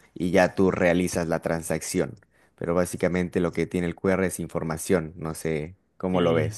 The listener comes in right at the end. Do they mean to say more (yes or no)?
yes